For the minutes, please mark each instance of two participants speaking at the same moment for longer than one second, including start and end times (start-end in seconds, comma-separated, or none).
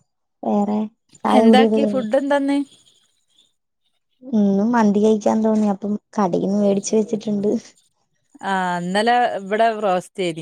none